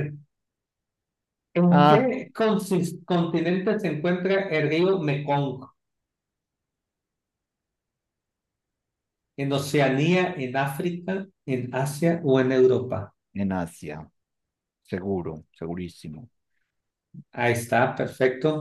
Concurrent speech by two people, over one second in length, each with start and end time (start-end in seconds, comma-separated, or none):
none